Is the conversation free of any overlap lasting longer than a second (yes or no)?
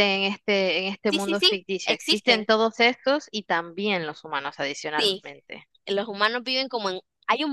no